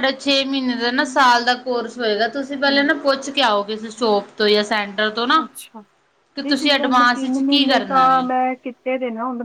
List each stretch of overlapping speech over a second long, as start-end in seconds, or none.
6.4-8.2